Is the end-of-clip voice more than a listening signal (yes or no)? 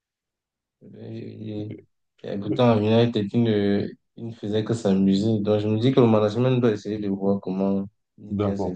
yes